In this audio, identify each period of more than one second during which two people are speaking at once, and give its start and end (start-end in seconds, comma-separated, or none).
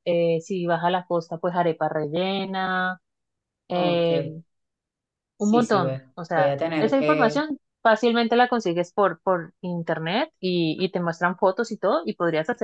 5.4-7.4